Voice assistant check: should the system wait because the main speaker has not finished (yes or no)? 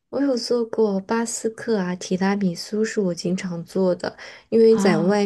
yes